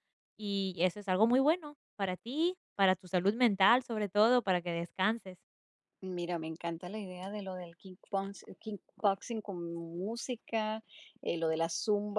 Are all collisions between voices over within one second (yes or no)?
yes